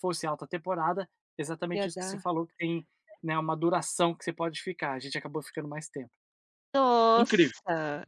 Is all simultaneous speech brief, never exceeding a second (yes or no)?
yes